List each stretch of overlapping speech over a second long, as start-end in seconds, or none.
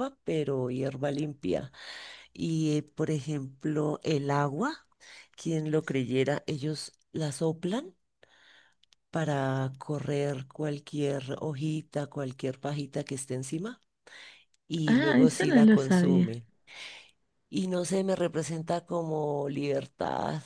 14.9-16.4